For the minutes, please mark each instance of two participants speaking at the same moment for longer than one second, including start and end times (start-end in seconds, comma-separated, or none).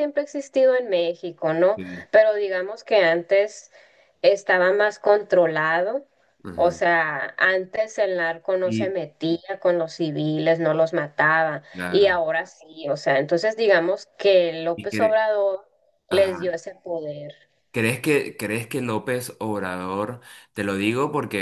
none